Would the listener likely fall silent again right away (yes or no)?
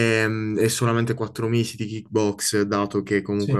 yes